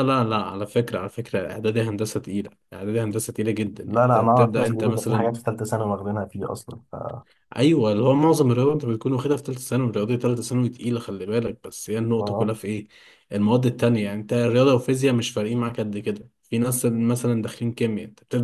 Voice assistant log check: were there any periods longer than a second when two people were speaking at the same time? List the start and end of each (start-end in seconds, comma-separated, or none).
3.9-5.3